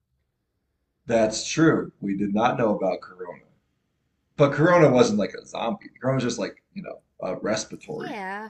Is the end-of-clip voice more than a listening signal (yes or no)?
yes